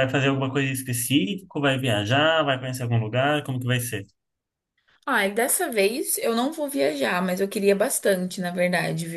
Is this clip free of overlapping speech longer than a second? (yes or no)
yes